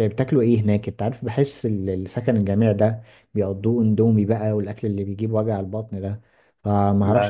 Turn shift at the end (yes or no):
no